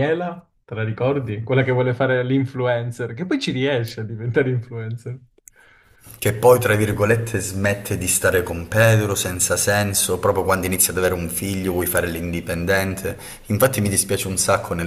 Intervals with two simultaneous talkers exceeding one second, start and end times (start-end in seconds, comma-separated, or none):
none